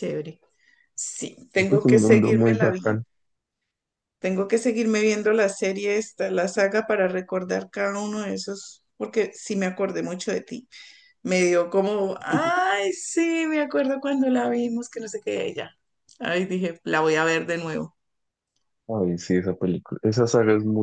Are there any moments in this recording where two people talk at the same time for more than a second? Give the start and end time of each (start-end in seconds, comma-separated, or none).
1.6-2.8